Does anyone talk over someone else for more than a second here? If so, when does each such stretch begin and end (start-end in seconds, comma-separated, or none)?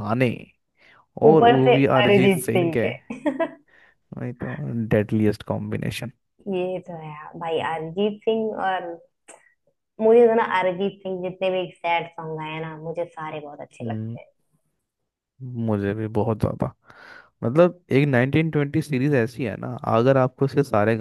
1.3-2.9